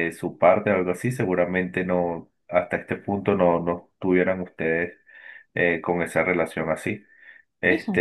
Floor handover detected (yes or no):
no